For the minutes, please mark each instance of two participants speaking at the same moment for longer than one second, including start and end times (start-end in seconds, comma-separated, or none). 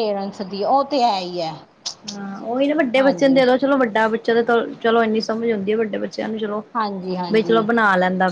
none